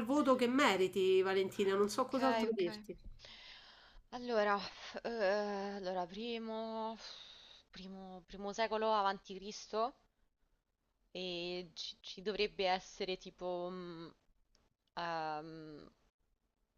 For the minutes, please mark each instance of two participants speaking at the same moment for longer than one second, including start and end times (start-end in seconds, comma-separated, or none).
none